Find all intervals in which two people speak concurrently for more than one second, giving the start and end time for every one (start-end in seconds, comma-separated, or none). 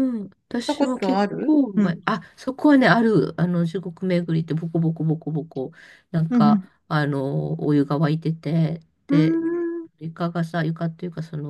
0.5-2.0